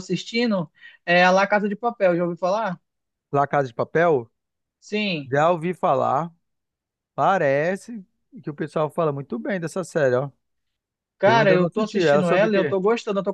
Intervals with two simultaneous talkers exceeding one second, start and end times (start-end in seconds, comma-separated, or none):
11.2-12.8